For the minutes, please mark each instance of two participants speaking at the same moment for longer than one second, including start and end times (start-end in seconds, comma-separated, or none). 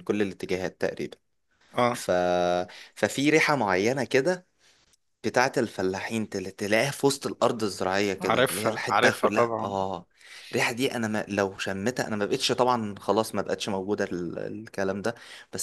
8.2-9.8